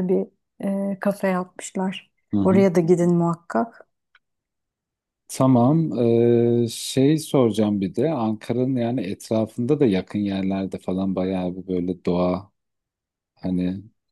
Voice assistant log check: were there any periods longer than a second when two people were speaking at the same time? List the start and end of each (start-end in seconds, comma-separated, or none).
none